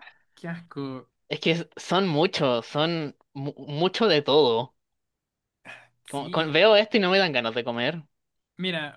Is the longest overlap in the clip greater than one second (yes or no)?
no